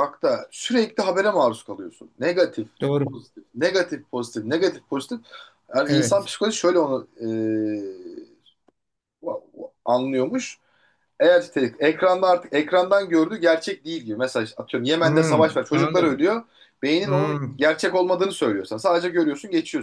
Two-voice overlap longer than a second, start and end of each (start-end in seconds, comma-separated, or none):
15.0-16.3